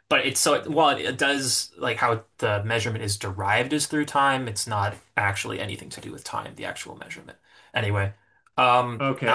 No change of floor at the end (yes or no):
no